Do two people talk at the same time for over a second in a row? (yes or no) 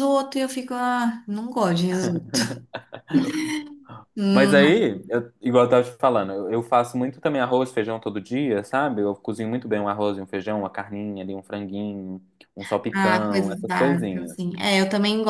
yes